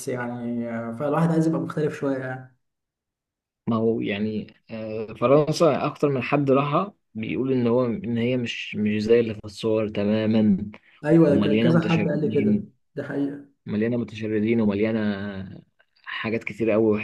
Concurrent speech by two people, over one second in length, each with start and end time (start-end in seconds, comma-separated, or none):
11.3-12.7